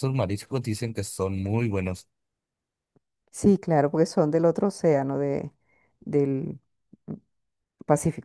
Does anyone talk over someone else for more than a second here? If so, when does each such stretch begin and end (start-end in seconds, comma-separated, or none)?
none